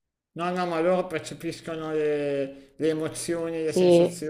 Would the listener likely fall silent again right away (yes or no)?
yes